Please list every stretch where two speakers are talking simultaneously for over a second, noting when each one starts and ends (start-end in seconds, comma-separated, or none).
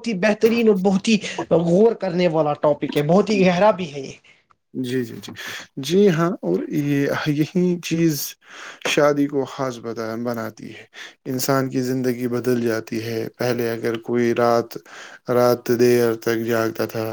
none